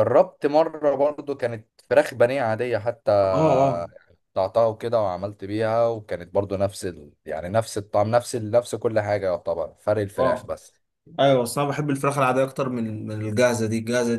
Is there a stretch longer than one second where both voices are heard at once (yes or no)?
no